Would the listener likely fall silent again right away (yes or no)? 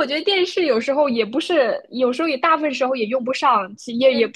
yes